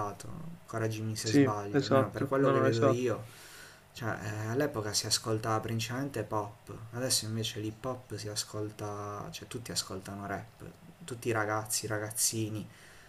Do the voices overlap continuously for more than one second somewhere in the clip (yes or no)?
yes